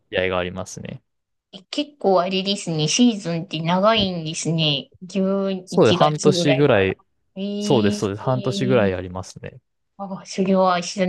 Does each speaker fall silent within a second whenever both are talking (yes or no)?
no